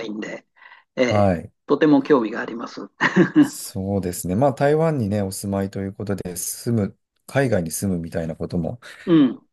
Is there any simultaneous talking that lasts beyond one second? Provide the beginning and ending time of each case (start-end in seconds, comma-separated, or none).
none